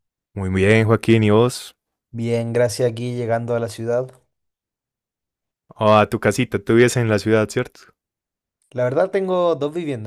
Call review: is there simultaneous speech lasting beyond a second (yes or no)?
no